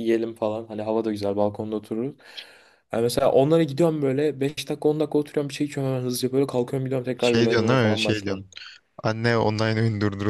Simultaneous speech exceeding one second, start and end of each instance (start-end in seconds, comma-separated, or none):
7.2-8.5